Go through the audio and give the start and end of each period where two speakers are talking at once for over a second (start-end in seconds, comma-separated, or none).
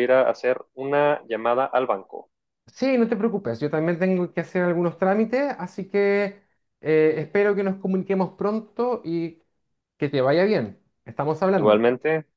none